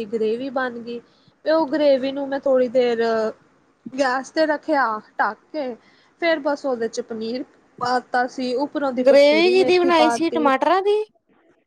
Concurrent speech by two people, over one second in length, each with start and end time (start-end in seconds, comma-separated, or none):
9.1-10.5